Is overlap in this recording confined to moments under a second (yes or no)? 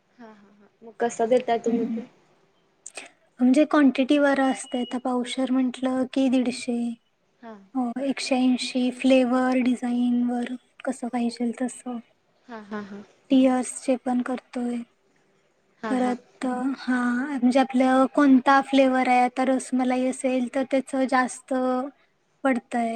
yes